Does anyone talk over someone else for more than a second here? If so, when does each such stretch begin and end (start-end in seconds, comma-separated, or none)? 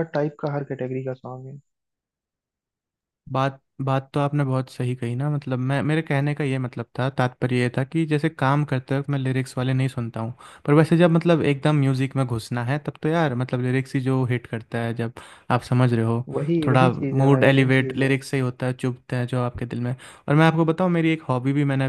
16.7-18.1